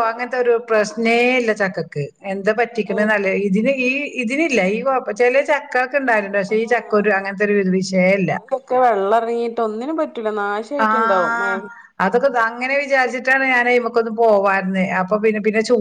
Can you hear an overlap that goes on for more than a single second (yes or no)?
no